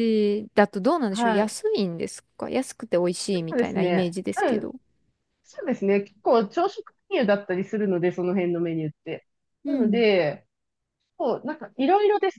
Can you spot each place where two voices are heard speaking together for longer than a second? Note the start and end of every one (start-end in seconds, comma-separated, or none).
3.3-4.7